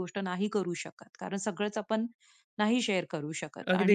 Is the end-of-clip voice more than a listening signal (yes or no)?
yes